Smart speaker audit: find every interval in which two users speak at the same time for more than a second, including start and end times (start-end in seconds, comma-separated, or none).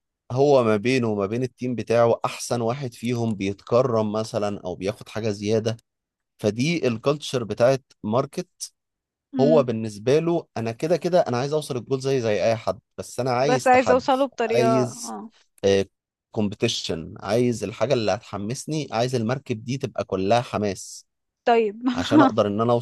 13.4-15.2